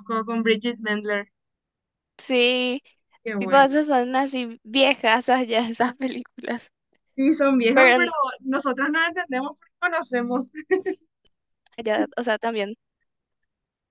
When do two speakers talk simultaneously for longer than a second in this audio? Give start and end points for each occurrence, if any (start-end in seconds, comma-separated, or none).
none